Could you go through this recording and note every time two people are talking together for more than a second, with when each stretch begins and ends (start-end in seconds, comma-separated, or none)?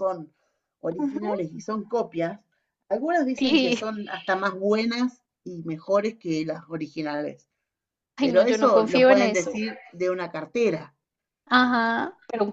8.2-9.6